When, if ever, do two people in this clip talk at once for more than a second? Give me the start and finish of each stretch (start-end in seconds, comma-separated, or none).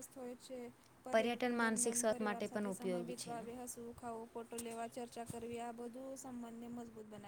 1.6-3.5